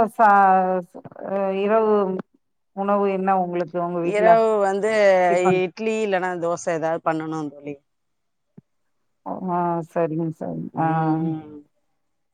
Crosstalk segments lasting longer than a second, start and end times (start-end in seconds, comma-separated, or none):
none